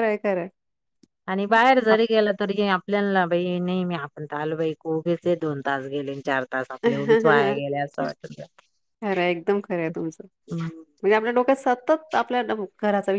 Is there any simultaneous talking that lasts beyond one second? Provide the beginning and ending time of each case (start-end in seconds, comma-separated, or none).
none